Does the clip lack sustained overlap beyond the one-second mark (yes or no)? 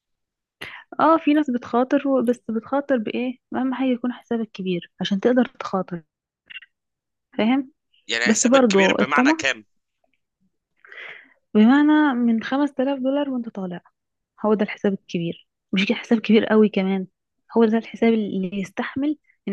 no